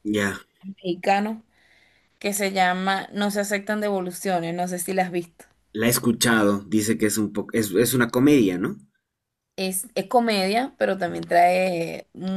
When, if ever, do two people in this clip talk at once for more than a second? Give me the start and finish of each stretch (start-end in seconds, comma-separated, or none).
none